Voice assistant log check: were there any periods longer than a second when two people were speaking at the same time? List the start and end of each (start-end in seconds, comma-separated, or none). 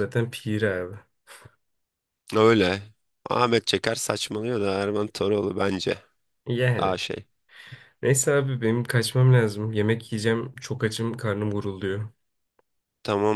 none